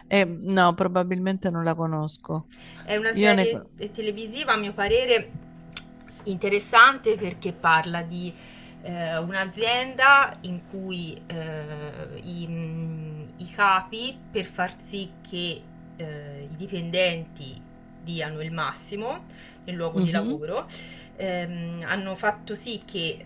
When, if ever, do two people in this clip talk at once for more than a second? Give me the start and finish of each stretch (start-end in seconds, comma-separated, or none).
none